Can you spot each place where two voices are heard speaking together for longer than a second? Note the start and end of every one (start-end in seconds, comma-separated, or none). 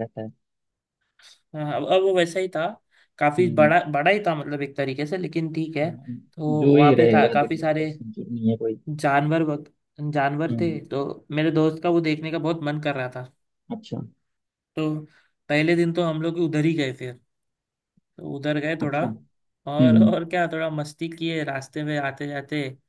6.6-7.9